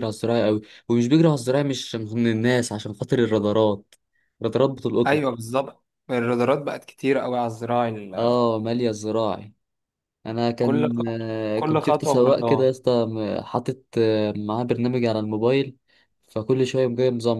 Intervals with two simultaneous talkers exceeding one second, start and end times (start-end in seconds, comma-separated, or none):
10.6-12.7